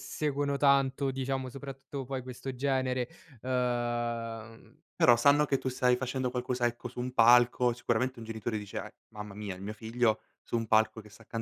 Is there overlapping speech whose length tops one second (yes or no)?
no